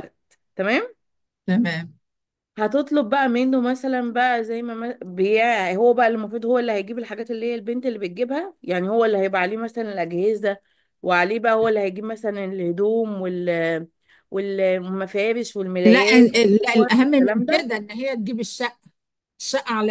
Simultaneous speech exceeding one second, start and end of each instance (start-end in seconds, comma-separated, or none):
15.8-17.7